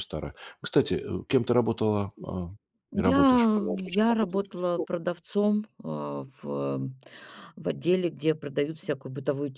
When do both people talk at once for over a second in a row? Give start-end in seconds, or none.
2.9-4.9